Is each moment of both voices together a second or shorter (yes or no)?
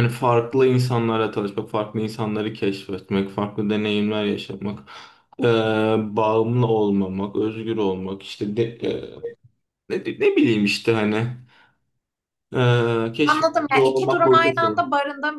no